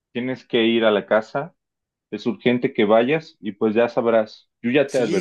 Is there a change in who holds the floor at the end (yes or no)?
yes